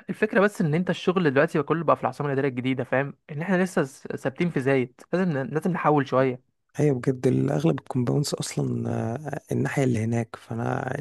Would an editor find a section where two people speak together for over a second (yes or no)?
no